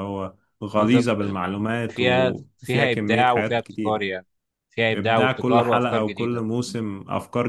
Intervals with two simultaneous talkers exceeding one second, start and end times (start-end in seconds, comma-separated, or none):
1.9-4.1, 4.9-6.5